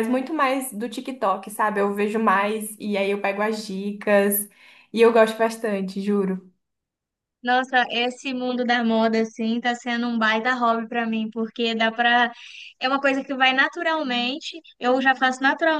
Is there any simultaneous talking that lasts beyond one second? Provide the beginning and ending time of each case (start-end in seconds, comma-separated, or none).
none